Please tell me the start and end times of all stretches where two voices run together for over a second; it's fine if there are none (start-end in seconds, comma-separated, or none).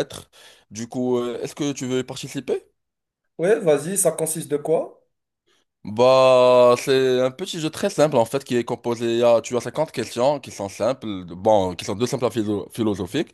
none